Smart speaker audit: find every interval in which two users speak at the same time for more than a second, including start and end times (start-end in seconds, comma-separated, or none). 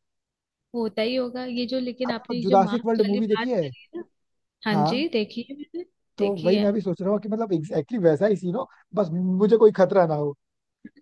2.1-3.7